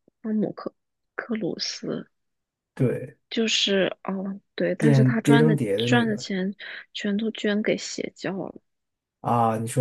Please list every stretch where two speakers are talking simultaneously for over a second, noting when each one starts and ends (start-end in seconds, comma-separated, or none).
4.8-6.2